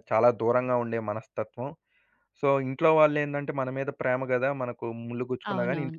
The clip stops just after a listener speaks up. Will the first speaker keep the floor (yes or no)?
no